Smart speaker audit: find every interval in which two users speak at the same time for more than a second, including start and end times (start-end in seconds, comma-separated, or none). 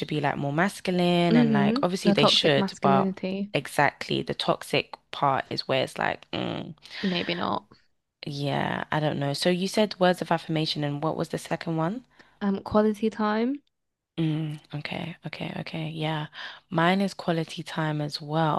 1.3-3.1